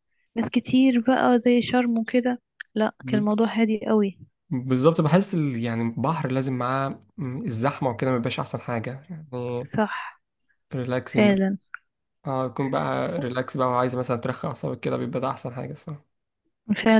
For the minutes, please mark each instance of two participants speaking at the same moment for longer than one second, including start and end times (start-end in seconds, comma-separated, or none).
none